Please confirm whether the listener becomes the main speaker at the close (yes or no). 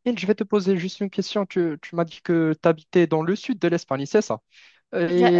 no